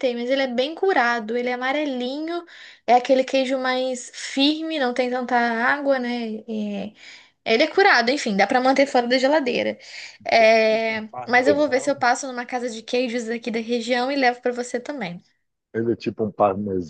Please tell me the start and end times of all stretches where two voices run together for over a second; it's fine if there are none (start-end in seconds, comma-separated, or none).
10.6-12.0